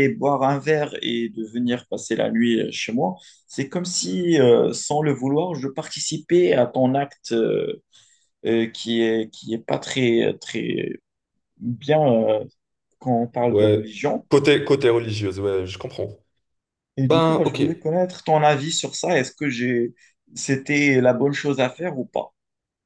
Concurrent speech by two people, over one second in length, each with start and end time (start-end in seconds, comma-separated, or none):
none